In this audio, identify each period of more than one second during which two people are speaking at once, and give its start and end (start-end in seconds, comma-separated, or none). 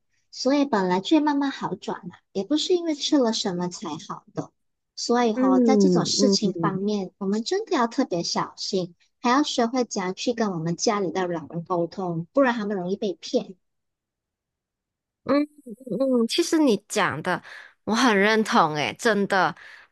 5.3-6.8